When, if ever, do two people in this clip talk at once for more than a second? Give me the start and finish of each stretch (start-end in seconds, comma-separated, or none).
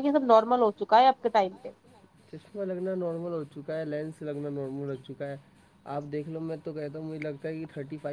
none